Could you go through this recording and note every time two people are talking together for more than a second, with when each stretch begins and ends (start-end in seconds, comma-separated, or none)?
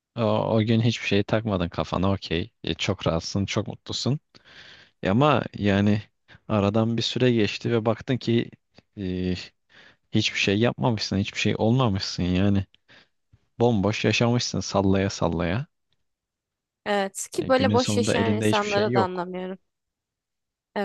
17.4-19.3